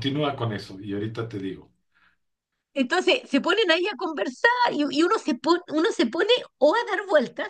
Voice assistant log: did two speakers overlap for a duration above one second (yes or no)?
no